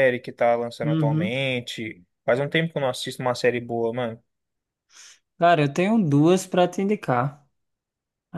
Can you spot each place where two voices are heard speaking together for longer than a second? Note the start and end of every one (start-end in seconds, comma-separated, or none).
none